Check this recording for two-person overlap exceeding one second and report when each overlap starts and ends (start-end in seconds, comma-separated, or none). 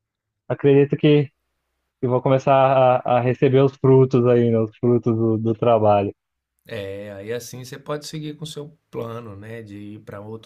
none